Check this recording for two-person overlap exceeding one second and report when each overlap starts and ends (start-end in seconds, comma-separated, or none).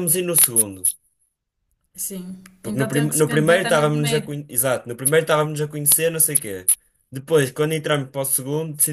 2.6-4.4